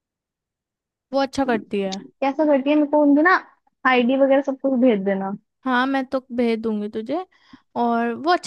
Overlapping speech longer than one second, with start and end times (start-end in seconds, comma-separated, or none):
none